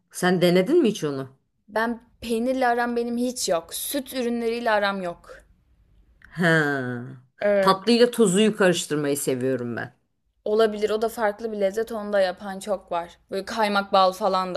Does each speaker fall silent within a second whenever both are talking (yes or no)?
yes